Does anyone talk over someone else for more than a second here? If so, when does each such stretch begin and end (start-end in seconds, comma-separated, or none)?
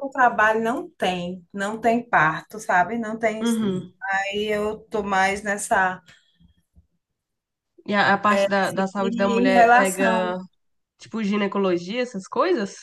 9.0-10.4